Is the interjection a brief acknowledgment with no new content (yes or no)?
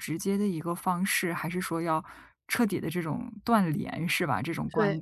yes